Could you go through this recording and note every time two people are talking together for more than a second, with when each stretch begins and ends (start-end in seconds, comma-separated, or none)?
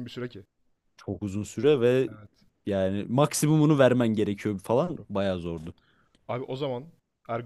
none